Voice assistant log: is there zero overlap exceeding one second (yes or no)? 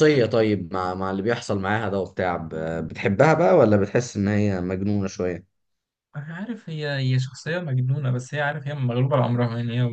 yes